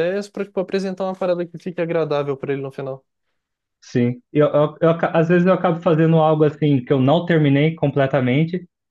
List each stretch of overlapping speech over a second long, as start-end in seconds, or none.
none